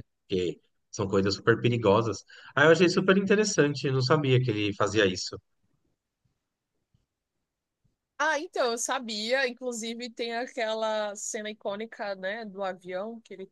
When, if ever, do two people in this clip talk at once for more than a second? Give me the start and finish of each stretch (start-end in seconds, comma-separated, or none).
none